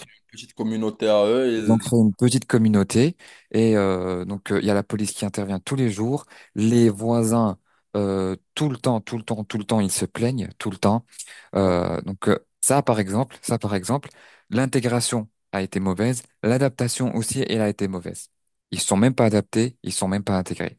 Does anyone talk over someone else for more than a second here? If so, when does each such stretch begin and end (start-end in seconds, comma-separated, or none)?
none